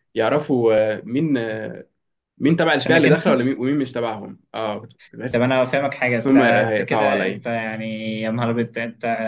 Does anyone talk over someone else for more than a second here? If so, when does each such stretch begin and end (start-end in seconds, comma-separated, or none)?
6.3-7.5